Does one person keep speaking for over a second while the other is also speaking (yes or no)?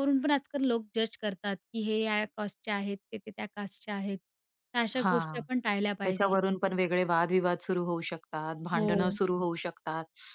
no